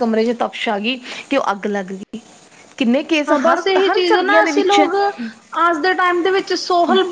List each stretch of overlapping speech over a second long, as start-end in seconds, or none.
3.3-4.9